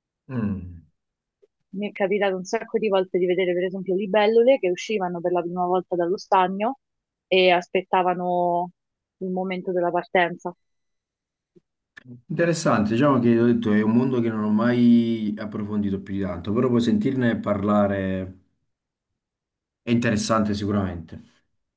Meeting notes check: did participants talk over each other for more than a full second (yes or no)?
no